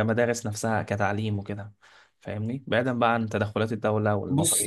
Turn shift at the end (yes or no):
yes